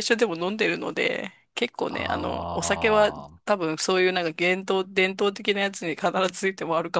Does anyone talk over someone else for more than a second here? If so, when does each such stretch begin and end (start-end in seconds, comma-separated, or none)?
1.9-3.4